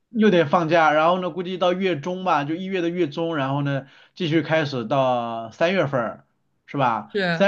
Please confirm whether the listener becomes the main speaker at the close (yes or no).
no